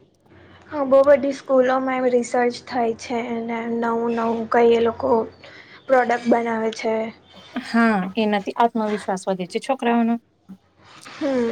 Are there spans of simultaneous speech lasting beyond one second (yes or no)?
no